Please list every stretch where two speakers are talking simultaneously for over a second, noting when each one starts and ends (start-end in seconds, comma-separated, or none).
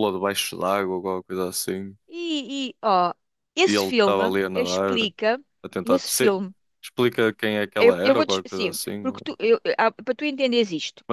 3.6-5.1, 7.8-9.2